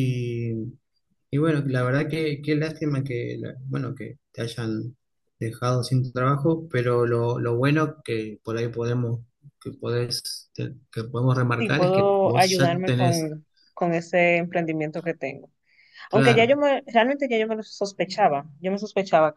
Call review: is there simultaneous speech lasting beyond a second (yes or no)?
yes